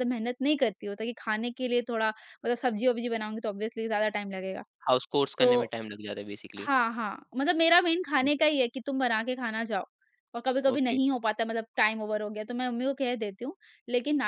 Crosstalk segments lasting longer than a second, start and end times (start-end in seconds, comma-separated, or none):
none